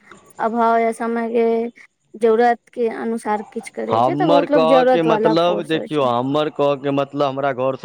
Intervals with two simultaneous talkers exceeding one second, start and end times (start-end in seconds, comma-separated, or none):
3.9-6.1